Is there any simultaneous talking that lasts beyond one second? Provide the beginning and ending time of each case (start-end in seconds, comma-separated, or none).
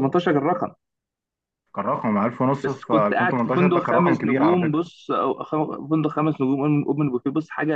2.6-4.8